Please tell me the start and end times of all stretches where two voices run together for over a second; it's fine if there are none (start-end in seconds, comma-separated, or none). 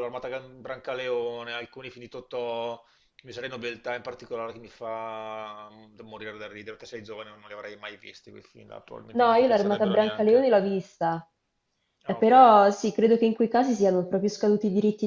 9.2-10.5